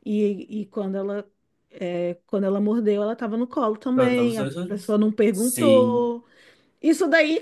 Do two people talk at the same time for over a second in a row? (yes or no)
yes